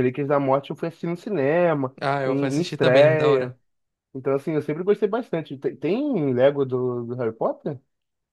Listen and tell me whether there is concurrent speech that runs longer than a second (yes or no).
yes